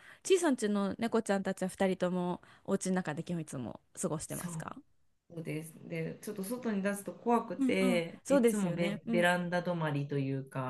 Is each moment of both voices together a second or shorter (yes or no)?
no